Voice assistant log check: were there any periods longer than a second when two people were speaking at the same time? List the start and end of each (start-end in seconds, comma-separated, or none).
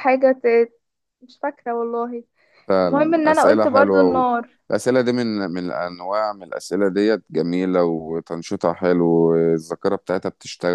2.9-4.2